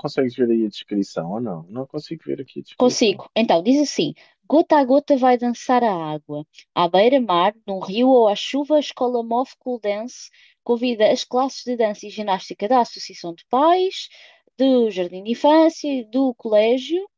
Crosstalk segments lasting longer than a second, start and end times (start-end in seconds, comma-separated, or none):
none